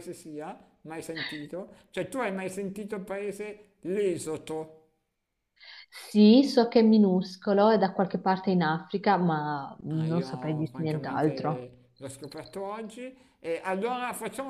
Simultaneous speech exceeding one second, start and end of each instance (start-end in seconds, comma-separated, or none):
9.9-11.7